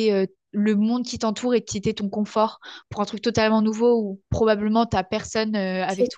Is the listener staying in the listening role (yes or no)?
yes